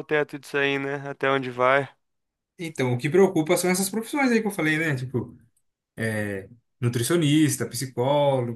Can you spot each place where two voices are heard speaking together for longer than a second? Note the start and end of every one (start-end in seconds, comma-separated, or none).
none